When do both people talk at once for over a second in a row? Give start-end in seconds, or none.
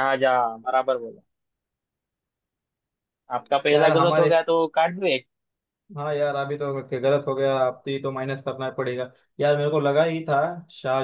none